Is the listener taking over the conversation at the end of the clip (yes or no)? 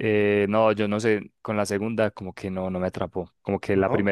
no